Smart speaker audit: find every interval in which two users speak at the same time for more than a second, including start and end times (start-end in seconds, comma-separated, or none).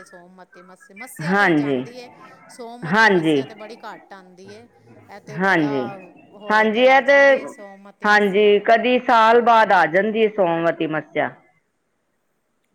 none